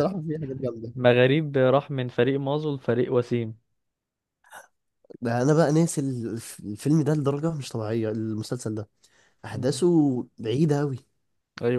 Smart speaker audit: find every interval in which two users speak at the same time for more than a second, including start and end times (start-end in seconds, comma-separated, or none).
none